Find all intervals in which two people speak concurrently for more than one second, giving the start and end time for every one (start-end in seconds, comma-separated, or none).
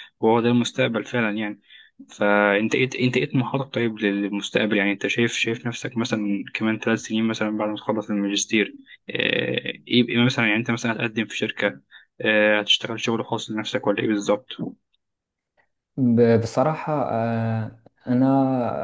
none